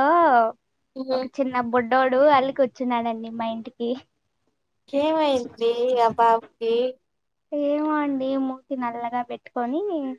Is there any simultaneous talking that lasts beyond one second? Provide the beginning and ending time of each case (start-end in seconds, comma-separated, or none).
none